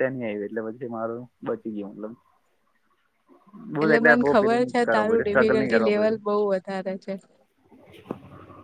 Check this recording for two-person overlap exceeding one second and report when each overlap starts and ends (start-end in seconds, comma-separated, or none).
4.4-6.2